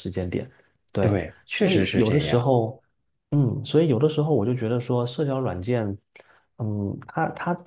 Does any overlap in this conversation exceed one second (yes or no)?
yes